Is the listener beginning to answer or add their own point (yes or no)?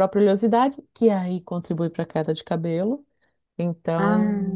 no